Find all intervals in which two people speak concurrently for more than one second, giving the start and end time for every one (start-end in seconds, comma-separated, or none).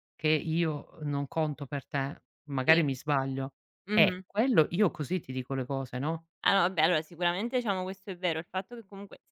none